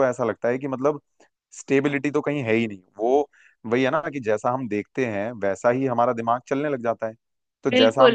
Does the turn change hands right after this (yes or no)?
yes